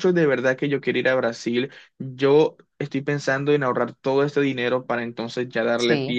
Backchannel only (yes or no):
no